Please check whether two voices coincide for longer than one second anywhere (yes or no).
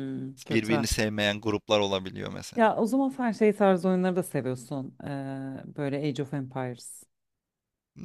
no